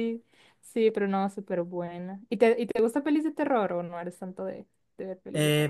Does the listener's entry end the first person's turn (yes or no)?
yes